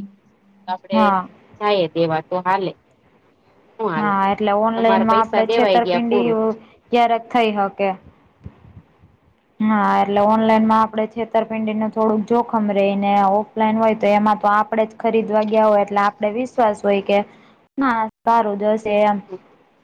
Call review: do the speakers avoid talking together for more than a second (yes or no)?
no